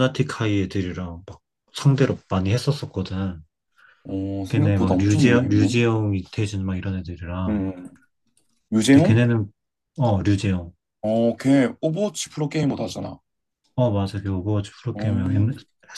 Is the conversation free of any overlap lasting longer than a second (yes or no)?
no